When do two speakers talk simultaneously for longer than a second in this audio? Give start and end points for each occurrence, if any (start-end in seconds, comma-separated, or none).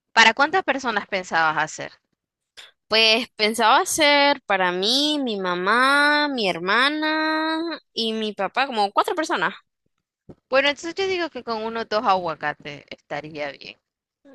none